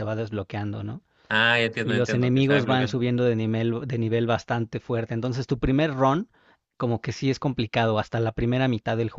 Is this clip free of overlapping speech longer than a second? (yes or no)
no